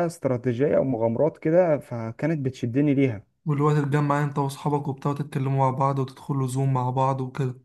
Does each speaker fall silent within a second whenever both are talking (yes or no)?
yes